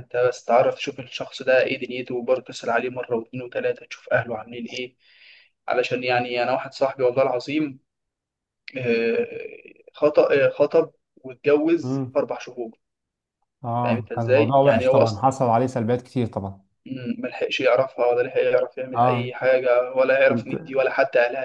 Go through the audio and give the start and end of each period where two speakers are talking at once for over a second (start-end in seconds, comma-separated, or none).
13.8-15.2